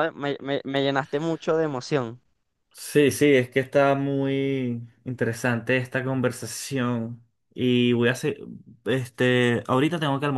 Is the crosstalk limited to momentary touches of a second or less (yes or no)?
yes